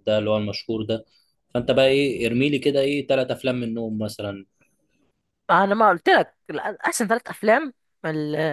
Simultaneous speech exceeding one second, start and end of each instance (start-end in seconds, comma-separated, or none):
none